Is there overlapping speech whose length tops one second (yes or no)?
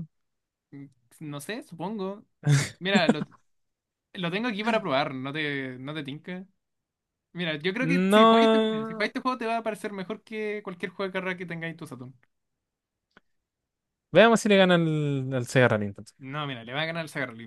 yes